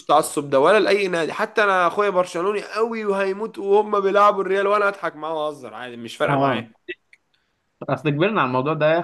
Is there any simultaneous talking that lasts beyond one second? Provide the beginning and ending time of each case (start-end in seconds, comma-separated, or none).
none